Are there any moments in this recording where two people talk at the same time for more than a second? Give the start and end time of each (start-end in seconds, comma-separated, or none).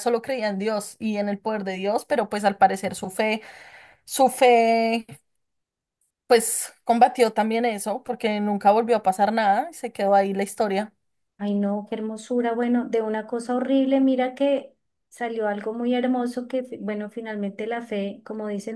none